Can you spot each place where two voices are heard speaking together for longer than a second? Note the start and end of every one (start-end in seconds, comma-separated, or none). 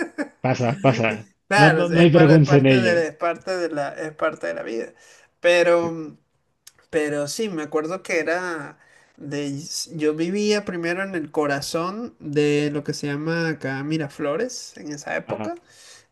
1.5-3.1